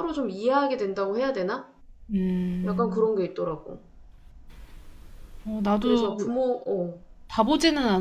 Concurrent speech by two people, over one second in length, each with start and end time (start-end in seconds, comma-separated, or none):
none